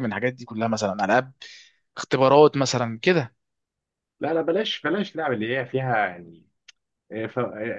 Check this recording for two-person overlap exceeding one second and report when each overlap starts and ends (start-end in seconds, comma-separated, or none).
none